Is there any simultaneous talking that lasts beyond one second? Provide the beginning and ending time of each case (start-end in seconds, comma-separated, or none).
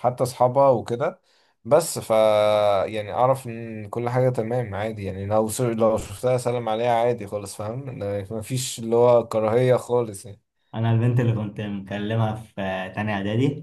none